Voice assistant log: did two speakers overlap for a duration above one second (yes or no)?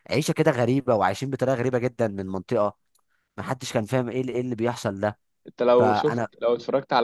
no